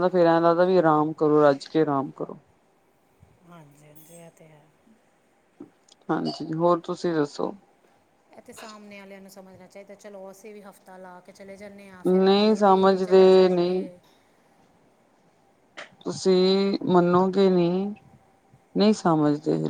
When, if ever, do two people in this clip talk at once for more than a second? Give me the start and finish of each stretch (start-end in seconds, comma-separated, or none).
12.1-13.8